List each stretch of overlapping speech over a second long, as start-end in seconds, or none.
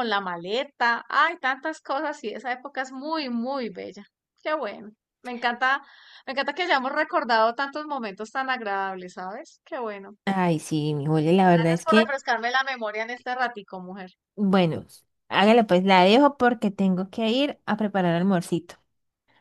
none